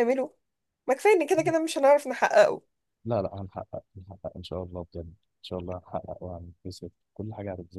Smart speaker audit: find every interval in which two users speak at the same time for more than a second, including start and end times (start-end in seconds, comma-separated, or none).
none